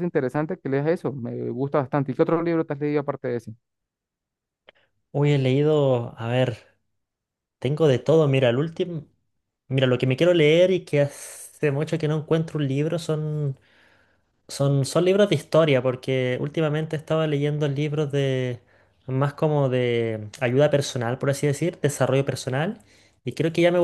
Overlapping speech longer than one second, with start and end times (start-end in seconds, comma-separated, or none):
none